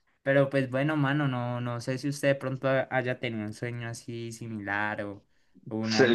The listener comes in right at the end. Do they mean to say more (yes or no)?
yes